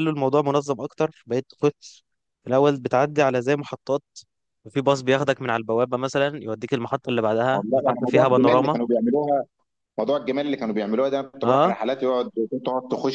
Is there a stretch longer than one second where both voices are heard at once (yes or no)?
yes